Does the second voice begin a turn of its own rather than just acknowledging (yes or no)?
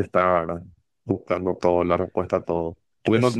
no